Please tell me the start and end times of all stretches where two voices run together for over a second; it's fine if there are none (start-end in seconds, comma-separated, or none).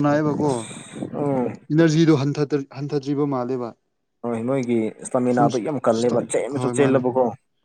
none